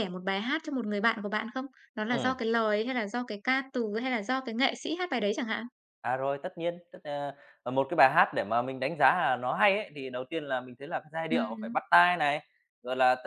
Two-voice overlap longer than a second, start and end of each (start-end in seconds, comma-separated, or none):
none